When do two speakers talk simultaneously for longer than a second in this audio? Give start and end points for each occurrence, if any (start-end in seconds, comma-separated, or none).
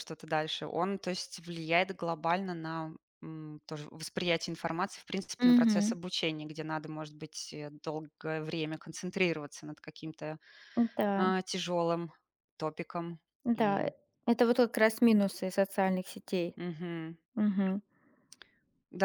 none